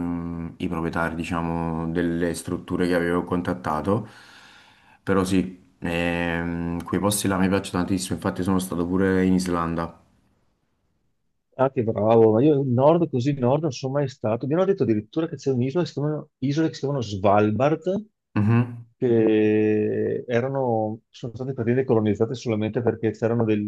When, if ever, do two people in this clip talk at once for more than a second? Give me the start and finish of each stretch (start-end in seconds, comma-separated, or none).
none